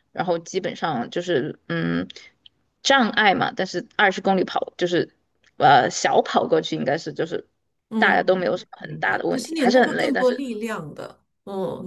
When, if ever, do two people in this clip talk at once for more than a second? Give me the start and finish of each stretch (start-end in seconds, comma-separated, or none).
8.0-10.4